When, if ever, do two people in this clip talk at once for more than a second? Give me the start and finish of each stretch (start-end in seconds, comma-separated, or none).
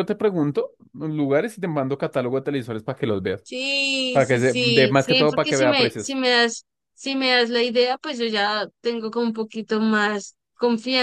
4.1-6.2